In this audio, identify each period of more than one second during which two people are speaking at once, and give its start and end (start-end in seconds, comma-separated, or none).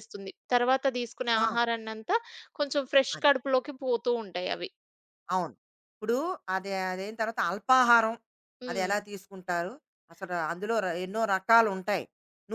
none